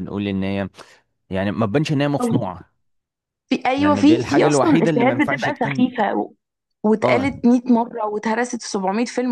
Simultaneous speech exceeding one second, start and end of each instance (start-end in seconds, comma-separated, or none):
3.8-5.8